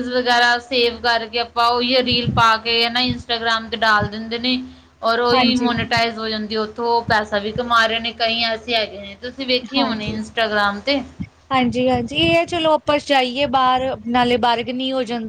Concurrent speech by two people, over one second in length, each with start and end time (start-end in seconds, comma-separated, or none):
none